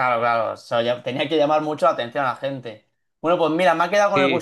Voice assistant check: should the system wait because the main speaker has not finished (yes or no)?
yes